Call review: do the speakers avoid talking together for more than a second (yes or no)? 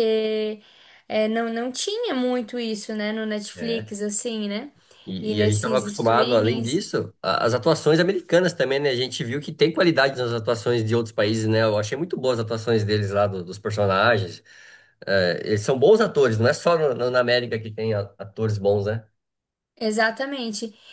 no